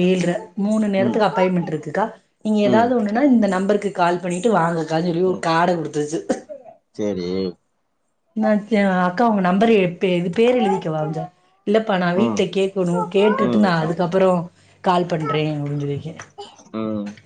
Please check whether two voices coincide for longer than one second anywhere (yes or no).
yes